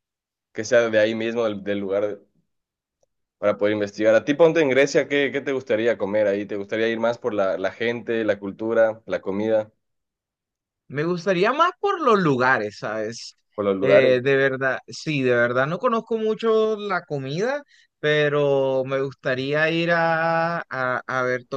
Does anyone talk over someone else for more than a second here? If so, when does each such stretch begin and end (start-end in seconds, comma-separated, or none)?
none